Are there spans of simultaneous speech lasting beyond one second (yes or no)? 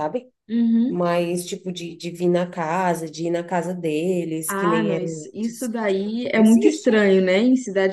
yes